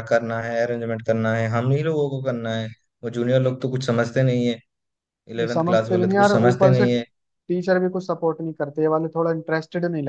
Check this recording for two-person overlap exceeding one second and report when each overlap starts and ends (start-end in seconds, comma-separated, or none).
5.4-6.8